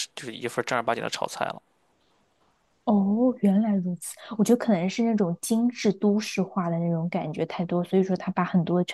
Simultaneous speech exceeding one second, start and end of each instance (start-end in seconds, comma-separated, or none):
none